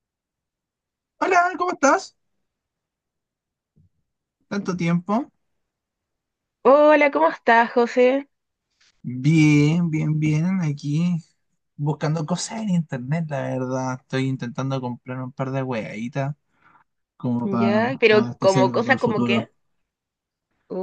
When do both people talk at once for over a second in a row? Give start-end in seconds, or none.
17.4-19.5